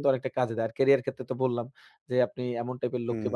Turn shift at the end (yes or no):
no